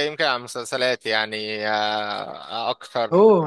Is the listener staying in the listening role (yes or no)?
no